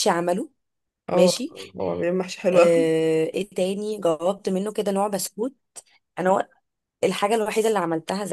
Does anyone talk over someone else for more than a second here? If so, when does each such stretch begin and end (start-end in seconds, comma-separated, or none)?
none